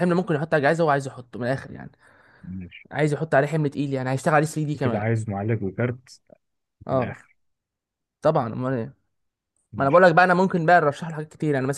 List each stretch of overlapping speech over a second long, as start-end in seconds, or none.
none